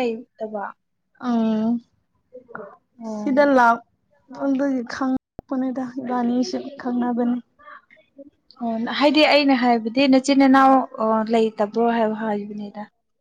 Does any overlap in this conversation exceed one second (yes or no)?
no